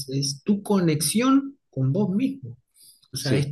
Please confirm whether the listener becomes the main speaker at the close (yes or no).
no